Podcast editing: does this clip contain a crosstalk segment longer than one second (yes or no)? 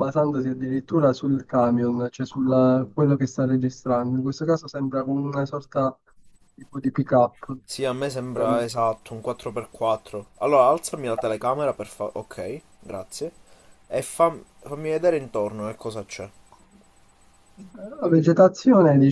no